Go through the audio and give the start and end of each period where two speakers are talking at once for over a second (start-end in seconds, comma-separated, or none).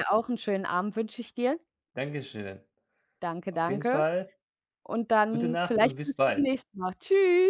5.2-6.6